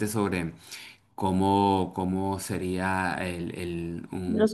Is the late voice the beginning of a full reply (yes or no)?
no